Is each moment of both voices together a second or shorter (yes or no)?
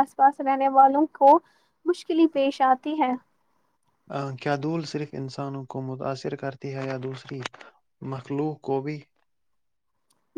yes